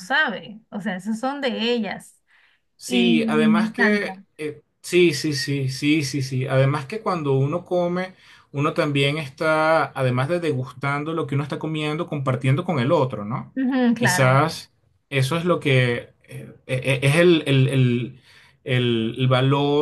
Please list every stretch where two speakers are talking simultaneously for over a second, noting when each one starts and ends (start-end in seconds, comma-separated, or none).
2.9-4.1